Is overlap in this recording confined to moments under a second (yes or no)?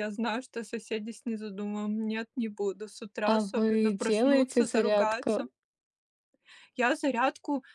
no